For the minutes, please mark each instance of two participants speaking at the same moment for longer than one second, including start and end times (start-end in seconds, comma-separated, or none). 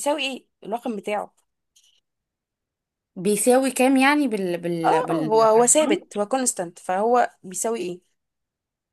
4.8-6.1